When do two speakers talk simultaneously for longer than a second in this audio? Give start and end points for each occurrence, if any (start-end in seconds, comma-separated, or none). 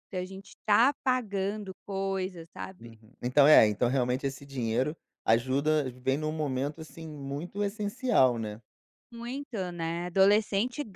none